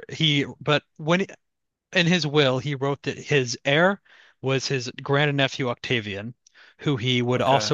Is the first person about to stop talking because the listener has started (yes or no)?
no